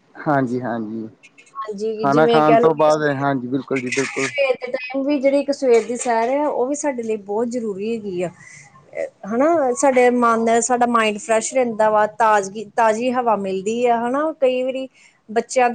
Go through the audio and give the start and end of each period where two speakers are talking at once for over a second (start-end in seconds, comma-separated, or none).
none